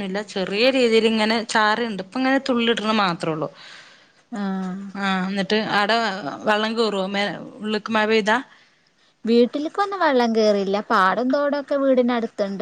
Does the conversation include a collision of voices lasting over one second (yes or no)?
no